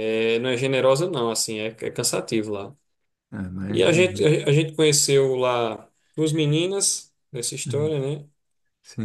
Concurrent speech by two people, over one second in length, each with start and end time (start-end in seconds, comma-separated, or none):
none